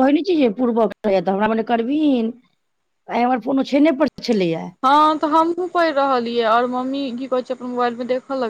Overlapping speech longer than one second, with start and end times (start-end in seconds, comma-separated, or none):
none